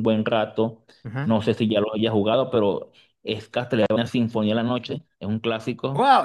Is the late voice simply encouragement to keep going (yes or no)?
no